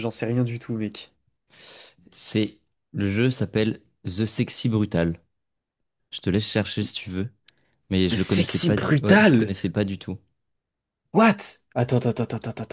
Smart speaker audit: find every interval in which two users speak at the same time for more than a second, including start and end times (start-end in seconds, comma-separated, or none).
8.0-9.5